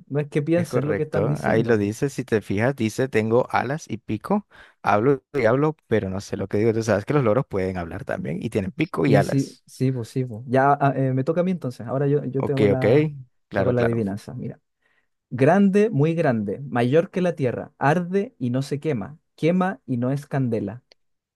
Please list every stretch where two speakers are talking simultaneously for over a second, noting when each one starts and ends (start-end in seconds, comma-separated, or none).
0.5-1.8